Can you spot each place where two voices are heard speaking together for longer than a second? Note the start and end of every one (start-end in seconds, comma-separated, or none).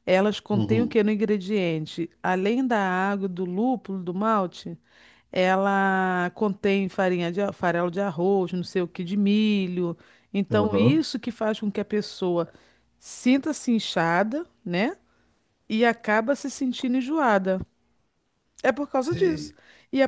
none